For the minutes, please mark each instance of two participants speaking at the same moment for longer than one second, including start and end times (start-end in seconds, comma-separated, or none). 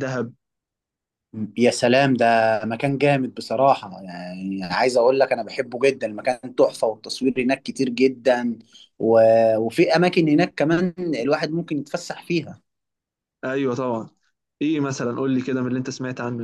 none